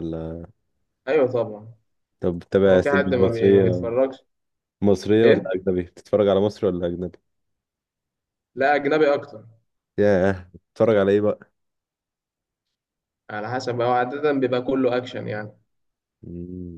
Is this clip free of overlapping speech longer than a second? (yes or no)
no